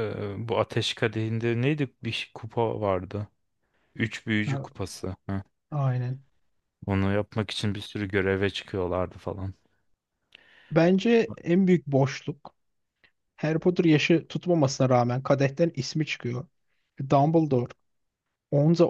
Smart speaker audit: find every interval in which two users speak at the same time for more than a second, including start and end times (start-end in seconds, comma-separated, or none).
none